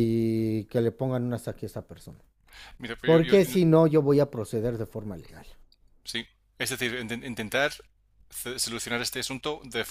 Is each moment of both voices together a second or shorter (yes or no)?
yes